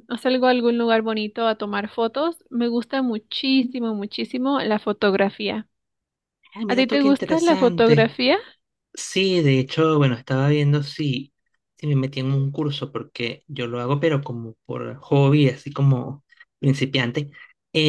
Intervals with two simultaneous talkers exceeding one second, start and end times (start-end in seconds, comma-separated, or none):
6.7-8.1